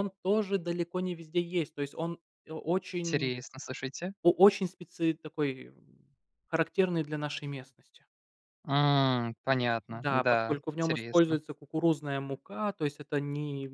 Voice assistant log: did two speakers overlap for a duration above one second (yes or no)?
yes